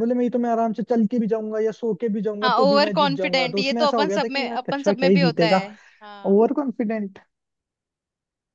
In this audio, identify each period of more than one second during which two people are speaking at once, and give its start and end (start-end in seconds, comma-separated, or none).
2.4-5.6